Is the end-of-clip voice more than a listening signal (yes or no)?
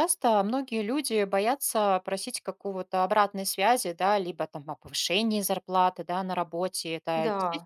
no